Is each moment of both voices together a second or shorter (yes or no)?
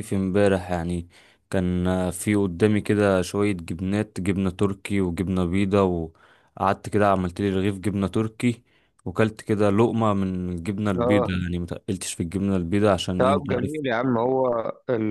yes